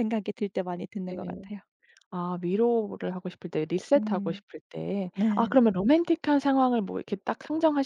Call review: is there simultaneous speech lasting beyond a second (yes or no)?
no